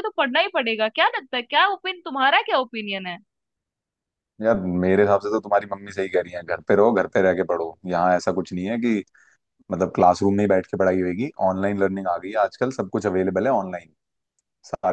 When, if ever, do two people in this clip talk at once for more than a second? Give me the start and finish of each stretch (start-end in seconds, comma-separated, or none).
none